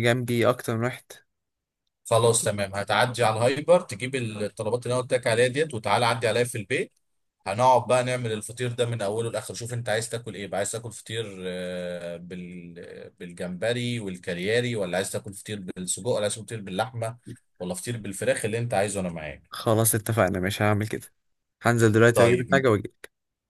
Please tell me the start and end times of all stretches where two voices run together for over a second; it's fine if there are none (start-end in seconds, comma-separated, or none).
none